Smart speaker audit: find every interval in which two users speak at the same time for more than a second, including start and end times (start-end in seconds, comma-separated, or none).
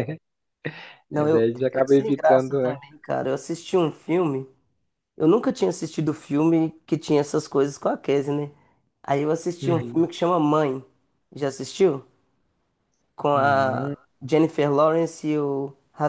1.1-2.8